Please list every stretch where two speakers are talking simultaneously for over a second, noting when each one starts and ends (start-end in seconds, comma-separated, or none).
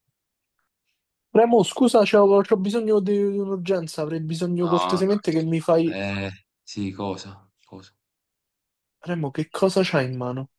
4.6-6.0